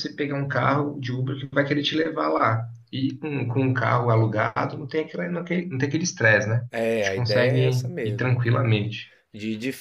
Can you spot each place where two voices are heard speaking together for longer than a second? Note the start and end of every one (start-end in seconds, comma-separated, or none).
6.7-8.6